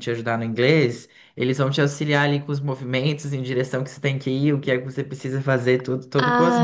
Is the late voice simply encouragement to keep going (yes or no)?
no